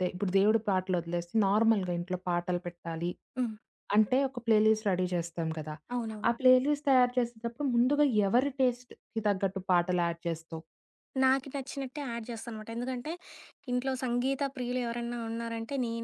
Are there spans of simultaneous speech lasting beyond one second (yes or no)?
no